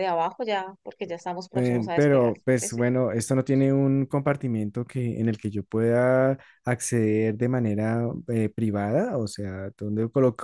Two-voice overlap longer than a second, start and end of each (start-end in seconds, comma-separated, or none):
1.5-2.8